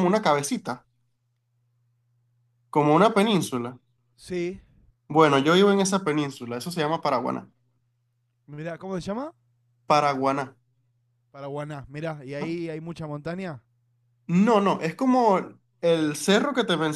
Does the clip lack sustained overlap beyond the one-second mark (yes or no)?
yes